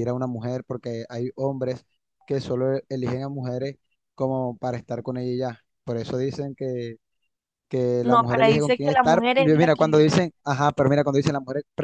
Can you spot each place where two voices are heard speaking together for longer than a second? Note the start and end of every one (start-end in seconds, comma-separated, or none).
8.0-10.1